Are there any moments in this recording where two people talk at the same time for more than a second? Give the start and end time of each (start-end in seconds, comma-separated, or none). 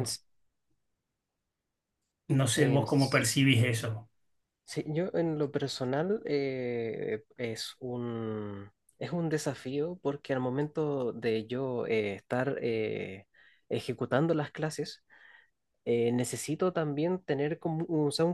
none